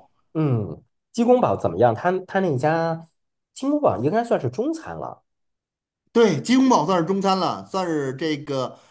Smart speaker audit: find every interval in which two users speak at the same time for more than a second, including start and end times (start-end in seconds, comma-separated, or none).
none